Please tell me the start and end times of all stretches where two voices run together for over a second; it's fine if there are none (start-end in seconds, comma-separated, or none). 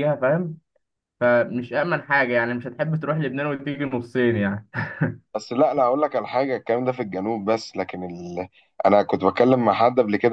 none